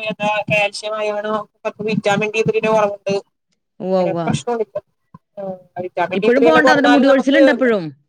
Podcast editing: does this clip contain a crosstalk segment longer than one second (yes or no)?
yes